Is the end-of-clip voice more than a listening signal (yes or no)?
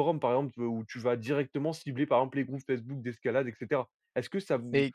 no